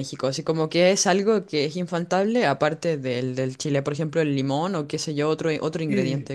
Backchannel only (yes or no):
no